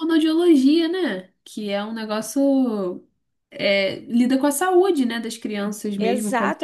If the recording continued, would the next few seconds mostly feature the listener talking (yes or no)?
yes